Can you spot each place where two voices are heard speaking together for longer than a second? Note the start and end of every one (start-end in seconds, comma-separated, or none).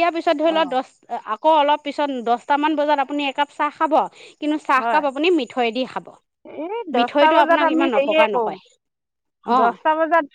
7.0-8.6